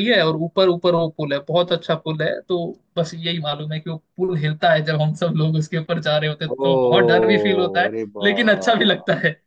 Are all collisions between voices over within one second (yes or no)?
no